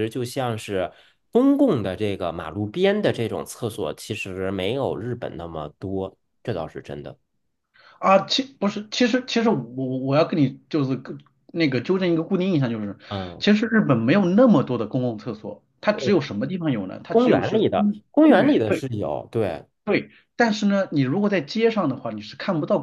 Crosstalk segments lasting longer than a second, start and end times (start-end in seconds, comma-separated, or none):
17.1-18.8